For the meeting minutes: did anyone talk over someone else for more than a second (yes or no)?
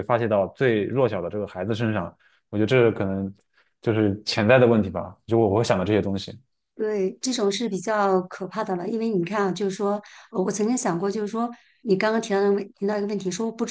no